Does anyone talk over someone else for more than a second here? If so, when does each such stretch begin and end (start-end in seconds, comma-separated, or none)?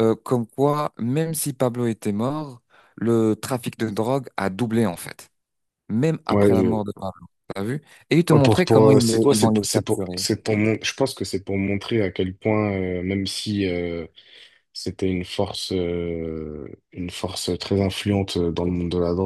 8.3-10.2